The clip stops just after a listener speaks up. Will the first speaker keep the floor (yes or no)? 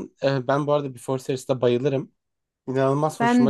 yes